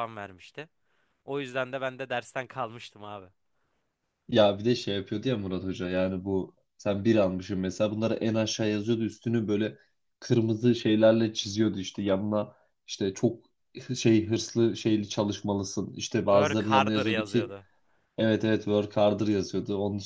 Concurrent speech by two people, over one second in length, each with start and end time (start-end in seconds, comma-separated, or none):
16.3-17.5